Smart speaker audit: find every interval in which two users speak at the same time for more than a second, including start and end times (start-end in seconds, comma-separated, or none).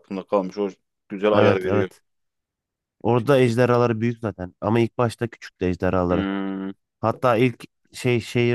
none